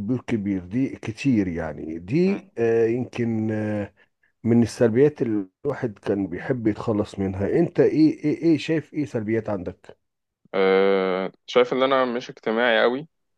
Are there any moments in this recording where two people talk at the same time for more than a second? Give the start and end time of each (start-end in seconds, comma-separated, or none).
none